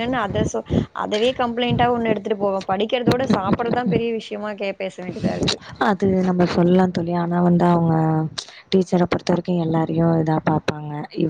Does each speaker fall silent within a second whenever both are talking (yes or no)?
yes